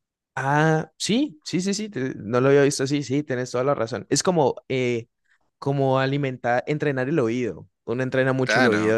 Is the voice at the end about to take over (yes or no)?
no